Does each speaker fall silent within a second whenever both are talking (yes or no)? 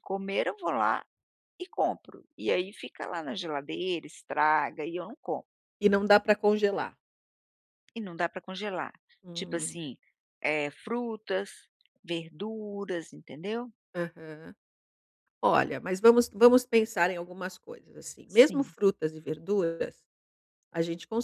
yes